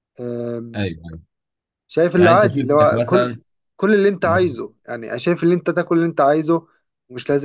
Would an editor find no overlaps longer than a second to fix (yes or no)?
no